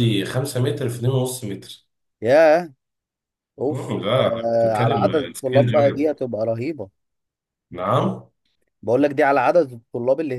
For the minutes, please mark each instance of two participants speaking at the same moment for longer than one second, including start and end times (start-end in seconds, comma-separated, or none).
3.7-6.1